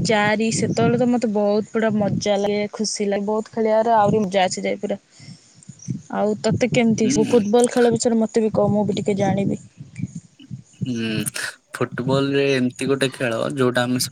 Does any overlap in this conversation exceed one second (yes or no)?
no